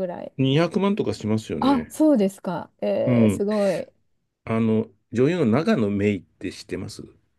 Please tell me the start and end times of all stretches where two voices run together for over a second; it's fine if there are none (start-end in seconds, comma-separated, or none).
none